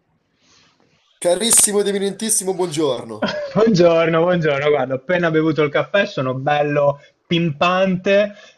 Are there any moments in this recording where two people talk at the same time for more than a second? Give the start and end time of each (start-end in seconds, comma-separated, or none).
none